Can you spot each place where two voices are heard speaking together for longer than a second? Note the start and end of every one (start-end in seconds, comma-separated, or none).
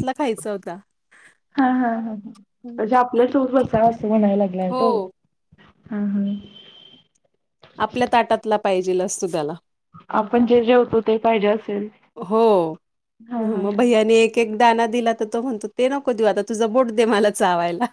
none